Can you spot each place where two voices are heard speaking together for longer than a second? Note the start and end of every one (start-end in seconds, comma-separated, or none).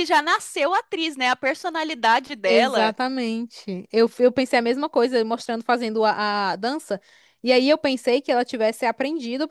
none